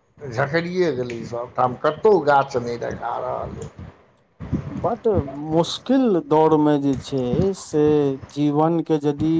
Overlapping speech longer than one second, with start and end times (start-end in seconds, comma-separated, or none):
none